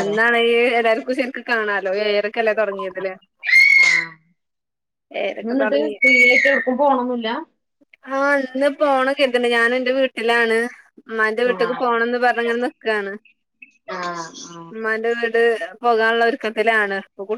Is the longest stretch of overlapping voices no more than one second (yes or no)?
yes